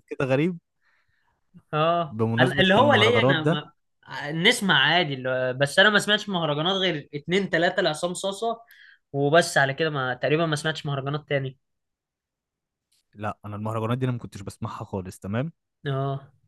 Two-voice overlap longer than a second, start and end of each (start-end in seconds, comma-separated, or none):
2.1-3.6